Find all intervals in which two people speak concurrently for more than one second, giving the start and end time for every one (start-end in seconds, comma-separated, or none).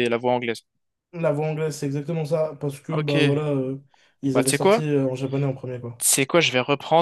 none